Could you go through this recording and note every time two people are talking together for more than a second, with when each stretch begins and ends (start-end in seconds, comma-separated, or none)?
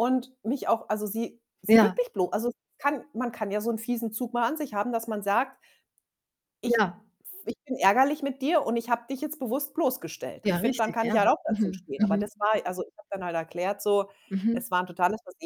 10.4-12.2